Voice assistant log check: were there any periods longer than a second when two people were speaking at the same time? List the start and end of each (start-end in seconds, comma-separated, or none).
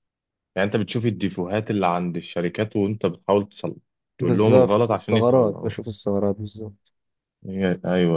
4.2-5.8